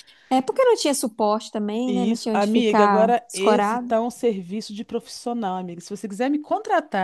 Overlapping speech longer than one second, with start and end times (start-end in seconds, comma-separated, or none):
1.9-3.9